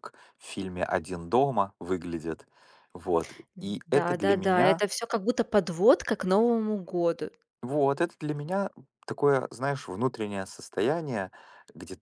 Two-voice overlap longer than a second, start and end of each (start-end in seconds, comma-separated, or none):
3.5-4.8